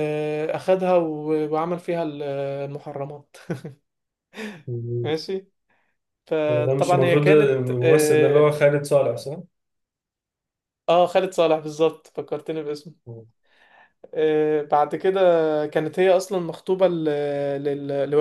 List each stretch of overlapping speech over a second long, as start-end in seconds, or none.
6.5-8.6